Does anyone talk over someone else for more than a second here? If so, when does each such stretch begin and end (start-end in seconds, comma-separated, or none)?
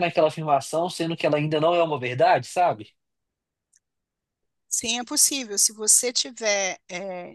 none